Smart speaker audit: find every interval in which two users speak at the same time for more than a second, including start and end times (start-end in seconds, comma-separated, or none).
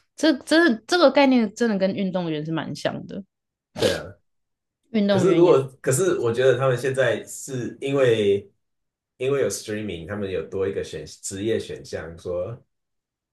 none